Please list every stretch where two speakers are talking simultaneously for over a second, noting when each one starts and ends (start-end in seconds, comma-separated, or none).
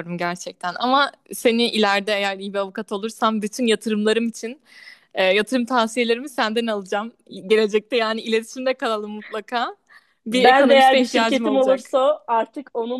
10.3-11.9